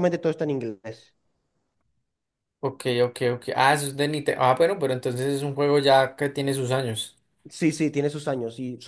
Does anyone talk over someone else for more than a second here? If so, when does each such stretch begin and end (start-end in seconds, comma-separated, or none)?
none